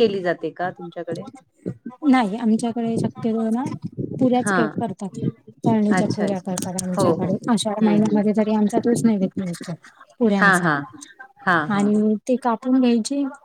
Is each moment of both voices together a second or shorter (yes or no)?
no